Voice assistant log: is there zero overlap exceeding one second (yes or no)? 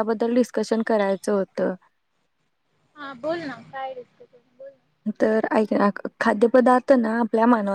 yes